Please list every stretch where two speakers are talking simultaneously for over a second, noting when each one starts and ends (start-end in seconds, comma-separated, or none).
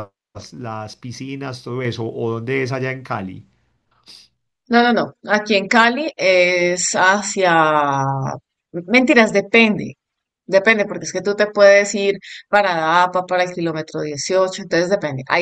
none